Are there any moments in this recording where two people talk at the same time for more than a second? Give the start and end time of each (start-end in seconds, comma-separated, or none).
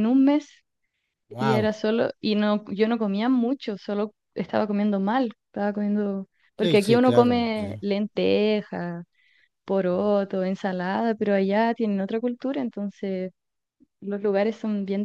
6.6-7.8